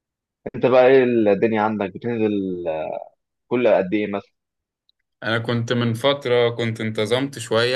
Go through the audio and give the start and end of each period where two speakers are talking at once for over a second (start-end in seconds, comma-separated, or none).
none